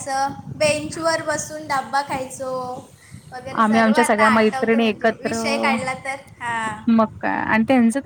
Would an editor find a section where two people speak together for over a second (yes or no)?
yes